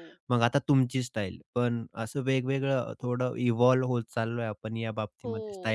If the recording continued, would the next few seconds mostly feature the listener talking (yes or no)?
yes